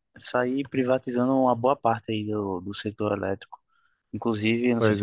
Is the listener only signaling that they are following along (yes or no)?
yes